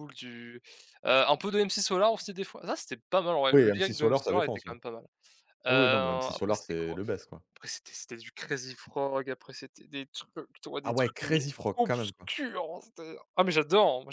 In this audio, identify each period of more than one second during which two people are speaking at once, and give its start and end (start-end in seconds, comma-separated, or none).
3.5-4.7, 5.7-7.0, 10.8-12.3